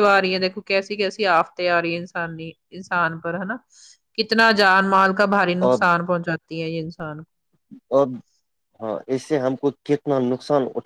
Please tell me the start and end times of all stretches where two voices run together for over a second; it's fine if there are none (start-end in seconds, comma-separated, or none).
none